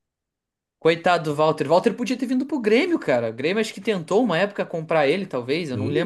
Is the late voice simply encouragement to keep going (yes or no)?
no